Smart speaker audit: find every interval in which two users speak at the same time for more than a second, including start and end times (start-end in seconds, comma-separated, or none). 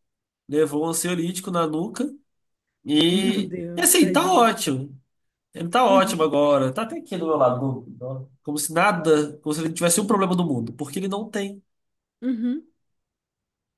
3.1-4.5